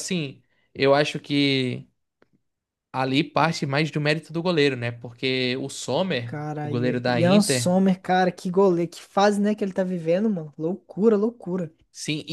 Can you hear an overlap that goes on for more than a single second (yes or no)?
yes